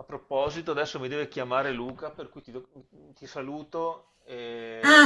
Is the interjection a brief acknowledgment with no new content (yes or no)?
no